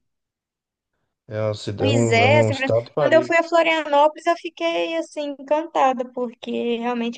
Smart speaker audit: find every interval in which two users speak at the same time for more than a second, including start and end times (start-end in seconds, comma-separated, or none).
1.8-3.4